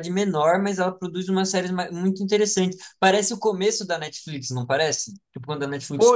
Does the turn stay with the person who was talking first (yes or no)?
no